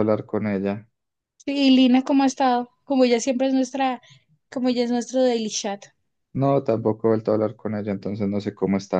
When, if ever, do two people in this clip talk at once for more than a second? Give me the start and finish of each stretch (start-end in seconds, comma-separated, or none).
none